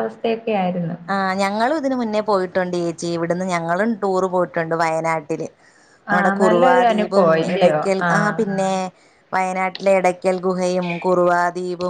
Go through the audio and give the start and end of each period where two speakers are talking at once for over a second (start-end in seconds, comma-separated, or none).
6.2-8.4